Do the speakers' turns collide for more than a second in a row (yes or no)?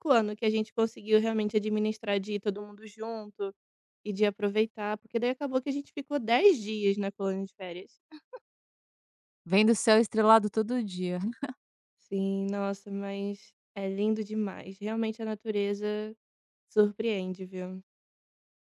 no